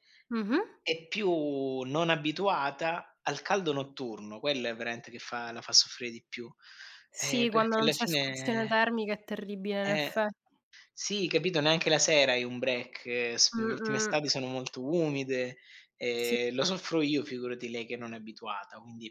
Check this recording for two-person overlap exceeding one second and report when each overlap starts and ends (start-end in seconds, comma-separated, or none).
7.2-8.8